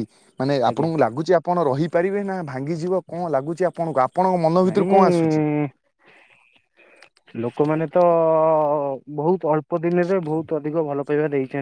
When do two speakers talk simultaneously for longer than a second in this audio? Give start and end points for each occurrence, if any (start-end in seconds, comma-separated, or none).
none